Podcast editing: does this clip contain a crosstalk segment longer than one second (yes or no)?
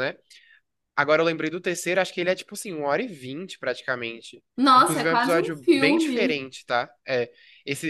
yes